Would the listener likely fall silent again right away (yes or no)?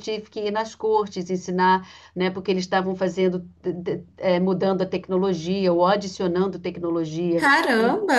yes